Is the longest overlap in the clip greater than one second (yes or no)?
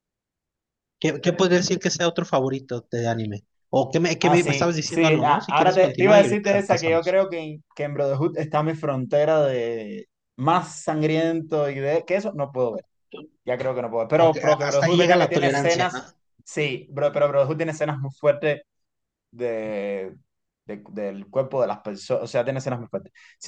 yes